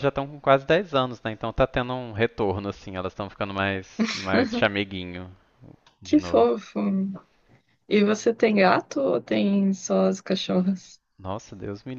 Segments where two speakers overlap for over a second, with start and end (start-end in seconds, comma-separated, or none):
none